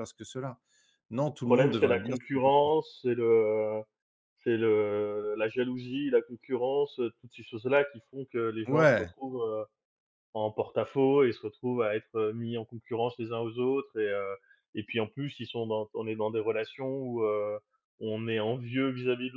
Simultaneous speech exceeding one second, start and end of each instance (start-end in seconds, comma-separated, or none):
1.4-2.7